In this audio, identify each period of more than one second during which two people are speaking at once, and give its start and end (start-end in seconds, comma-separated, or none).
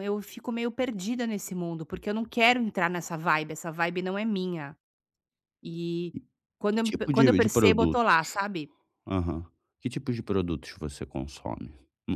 6.8-8.1